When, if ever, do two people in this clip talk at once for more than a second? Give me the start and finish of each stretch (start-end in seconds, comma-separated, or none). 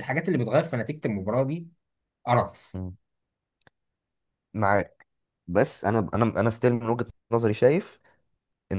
none